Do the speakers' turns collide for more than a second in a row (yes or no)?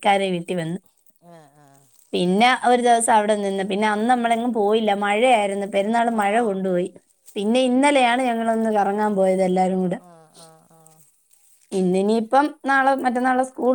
no